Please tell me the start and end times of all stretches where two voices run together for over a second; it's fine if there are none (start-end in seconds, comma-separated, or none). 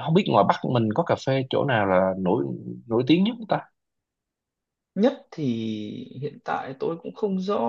none